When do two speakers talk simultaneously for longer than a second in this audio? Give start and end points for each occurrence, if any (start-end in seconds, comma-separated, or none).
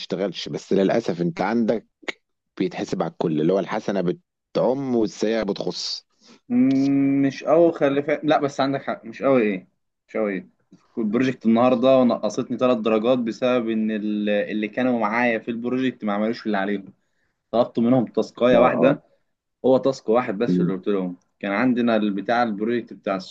none